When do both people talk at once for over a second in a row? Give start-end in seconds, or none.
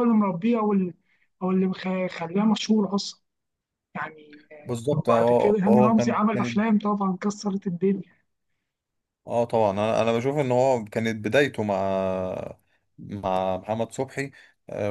4.9-6.6